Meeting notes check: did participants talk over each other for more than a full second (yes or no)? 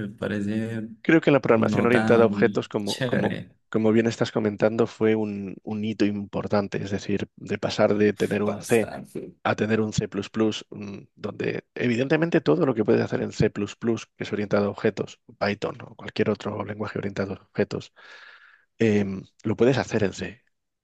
yes